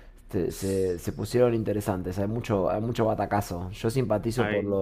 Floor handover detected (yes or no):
no